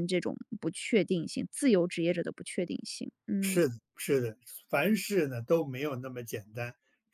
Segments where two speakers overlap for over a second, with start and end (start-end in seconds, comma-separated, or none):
none